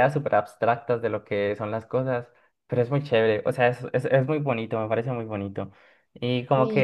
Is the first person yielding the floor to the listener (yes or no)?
no